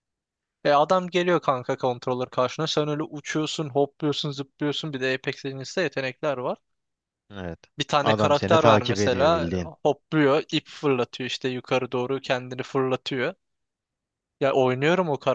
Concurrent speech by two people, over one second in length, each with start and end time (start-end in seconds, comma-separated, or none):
8.0-9.7